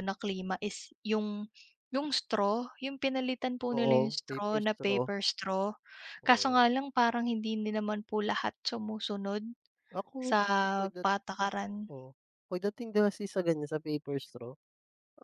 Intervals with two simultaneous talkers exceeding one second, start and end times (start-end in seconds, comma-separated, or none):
3.7-5.1